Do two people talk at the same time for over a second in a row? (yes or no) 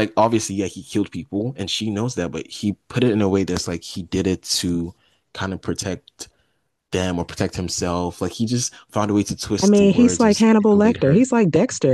yes